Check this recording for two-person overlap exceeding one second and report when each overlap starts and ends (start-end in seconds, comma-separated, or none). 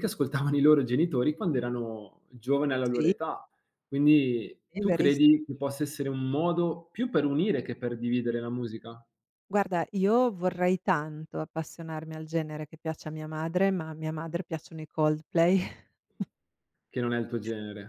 none